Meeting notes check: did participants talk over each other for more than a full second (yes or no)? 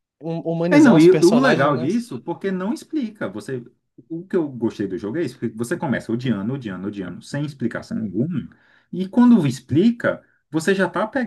yes